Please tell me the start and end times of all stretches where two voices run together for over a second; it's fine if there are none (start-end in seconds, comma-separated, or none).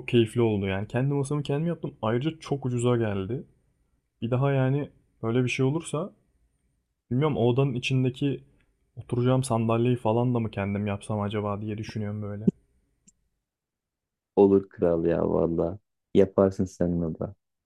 none